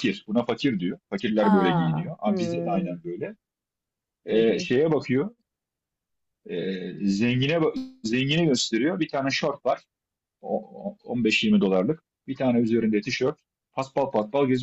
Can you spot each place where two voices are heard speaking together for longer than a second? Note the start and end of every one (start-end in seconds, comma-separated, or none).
1.4-3.0